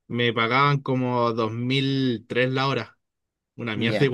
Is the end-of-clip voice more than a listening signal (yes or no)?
yes